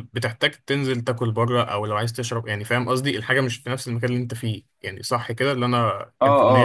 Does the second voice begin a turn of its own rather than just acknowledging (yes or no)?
yes